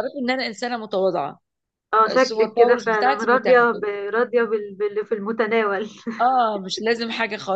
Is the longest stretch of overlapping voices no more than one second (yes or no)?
no